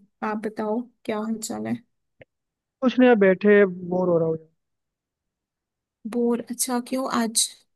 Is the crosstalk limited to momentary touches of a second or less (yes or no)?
yes